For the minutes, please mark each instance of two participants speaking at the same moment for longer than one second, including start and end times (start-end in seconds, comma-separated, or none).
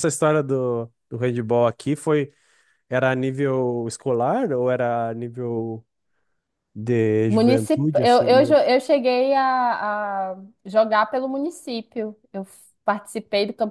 7.3-8.6